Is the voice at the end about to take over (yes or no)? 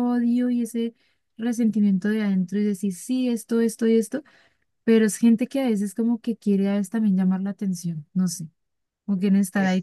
no